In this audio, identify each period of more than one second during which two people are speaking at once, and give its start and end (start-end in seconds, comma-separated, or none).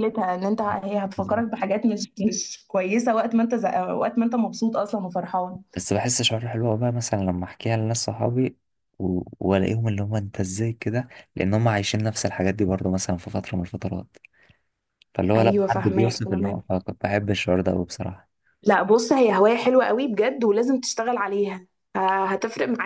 15.3-16.6